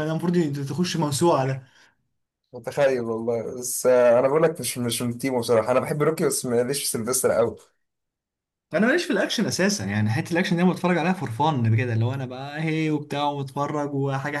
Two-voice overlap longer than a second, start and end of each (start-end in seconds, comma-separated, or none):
none